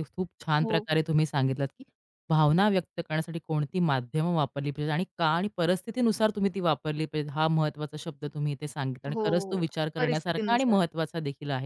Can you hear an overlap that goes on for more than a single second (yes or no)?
yes